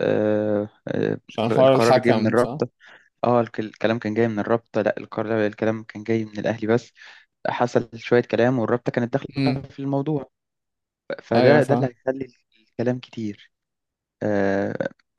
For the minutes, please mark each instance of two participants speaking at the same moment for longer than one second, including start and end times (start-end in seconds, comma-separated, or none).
1.3-2.6